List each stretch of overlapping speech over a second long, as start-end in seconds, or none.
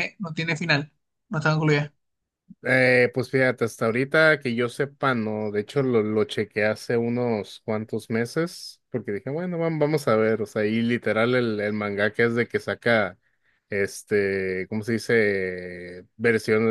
none